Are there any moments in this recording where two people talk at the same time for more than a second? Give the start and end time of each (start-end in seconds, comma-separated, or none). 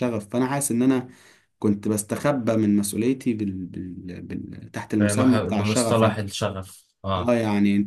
5.0-6.2